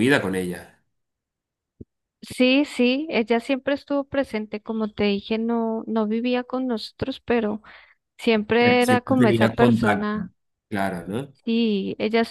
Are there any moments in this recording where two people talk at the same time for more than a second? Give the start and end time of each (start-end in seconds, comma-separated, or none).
8.6-10.3